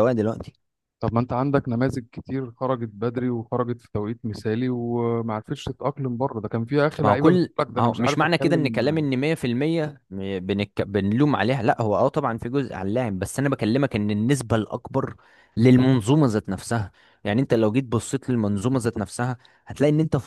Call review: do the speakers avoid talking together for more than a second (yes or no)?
no